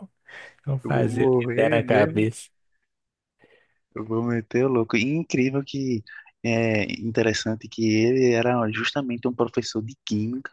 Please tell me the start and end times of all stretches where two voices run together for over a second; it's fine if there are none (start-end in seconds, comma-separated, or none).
0.8-2.3